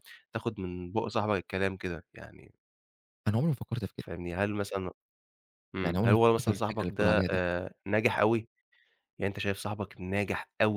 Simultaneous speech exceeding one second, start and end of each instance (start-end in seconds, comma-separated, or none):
5.8-7.4